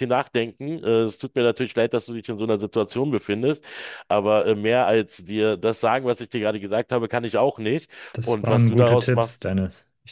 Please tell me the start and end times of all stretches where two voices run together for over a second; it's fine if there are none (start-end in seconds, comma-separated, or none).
8.1-9.5